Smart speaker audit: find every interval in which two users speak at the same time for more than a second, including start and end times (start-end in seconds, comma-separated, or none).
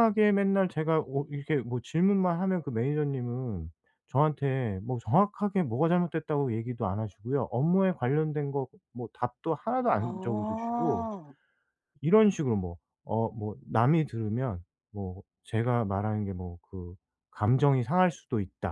9.8-11.1